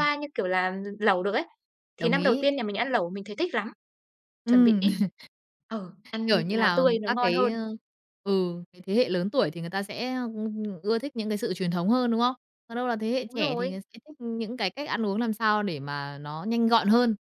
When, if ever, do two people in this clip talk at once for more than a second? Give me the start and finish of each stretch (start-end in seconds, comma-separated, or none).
6.3-7.5